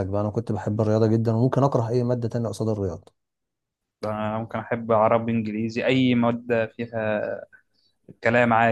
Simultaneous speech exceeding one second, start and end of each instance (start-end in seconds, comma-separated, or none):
none